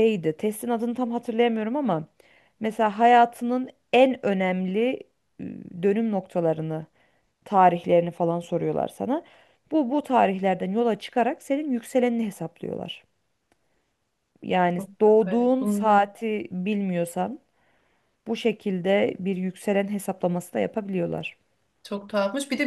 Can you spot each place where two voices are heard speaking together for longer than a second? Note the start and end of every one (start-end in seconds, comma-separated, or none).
14.8-16.0